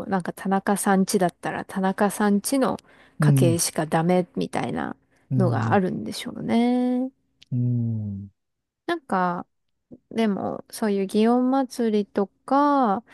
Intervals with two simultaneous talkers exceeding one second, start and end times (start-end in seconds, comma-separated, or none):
none